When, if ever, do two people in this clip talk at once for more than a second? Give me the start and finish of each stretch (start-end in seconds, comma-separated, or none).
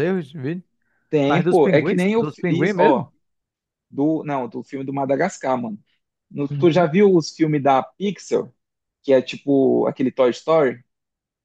1.3-3.1